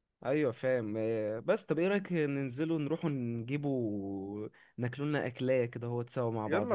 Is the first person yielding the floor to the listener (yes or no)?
yes